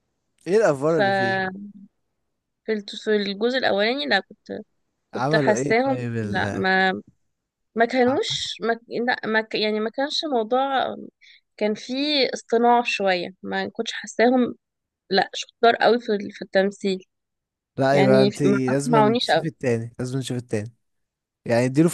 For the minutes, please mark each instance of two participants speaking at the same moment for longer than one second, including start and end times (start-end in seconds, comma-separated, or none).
5.1-6.6, 17.9-19.5